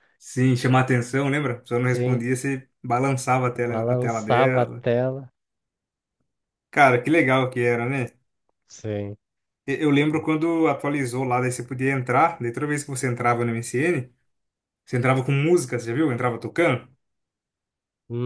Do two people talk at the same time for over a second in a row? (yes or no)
yes